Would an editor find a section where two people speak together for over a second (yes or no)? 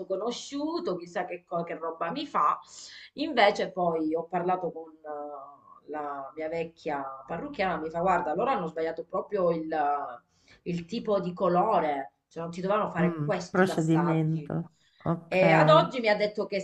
yes